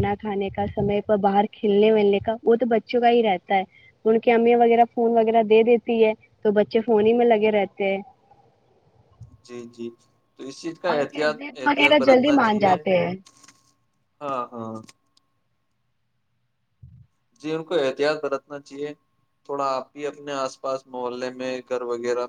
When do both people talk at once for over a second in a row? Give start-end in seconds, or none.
10.9-12.7